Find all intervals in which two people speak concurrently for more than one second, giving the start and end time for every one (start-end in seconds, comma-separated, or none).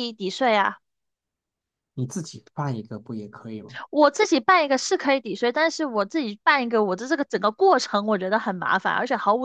none